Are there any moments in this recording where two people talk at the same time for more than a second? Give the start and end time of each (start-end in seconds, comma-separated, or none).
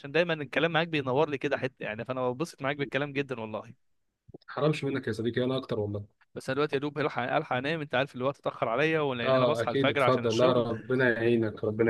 9.2-10.7